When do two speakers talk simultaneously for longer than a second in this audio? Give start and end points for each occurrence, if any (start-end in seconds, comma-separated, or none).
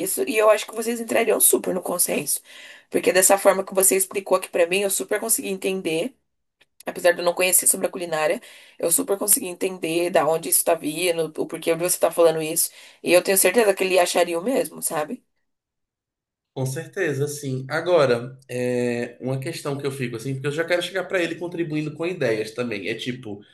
none